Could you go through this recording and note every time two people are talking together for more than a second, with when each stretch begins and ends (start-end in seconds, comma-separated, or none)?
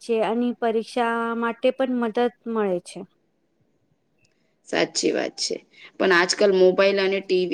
none